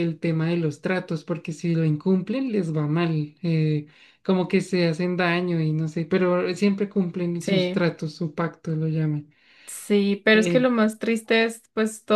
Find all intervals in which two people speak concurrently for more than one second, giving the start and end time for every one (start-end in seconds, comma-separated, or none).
none